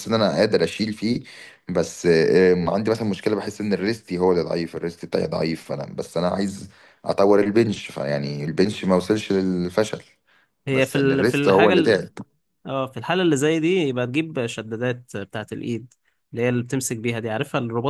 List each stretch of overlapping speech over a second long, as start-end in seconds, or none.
10.7-12.0